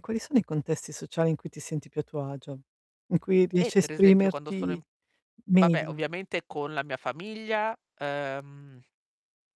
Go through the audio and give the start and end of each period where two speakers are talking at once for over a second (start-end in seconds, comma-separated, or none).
3.6-4.8